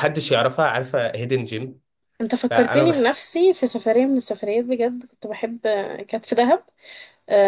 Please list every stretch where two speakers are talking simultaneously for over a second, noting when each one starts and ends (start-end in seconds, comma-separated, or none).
none